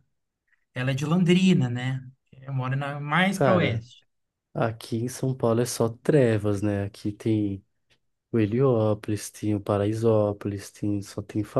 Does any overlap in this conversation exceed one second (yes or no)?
no